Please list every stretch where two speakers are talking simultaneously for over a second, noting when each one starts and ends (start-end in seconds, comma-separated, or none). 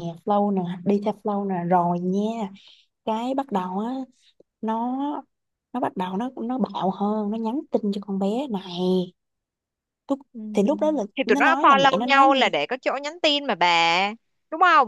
11.2-12.4